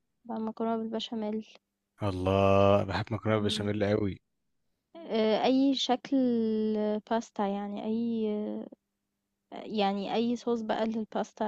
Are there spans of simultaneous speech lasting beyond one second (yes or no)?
no